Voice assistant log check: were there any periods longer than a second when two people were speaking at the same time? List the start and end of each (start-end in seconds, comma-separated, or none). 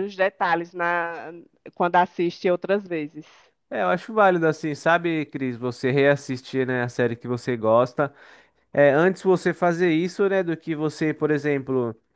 none